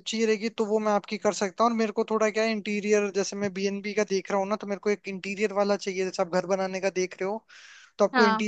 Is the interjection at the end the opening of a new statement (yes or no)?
no